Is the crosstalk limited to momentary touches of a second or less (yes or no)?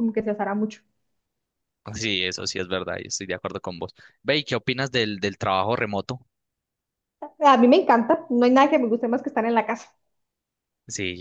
yes